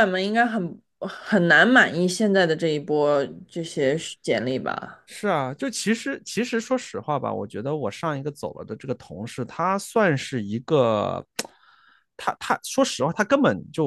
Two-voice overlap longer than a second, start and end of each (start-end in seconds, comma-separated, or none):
none